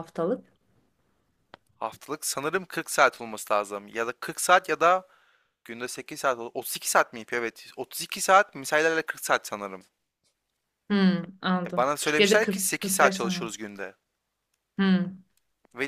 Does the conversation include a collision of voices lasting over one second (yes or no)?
yes